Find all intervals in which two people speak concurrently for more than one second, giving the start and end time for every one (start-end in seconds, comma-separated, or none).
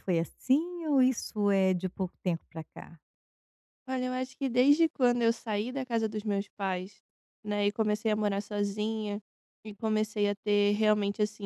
none